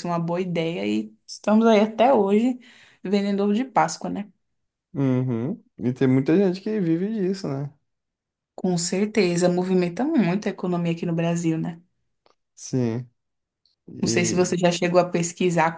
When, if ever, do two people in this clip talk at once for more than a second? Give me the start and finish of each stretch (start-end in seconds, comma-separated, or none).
none